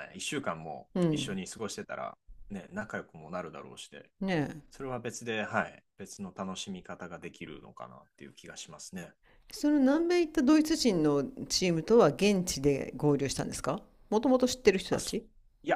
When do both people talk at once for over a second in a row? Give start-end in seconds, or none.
none